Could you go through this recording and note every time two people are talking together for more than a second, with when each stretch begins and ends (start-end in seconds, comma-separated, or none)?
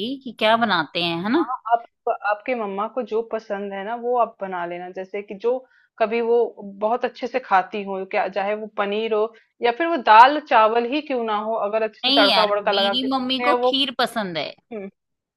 12.0-13.8